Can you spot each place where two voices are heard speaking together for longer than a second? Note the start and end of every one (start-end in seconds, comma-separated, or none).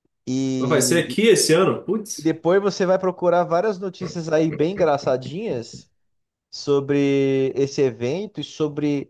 none